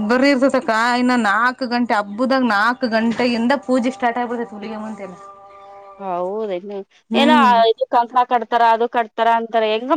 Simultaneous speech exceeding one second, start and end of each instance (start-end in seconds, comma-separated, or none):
none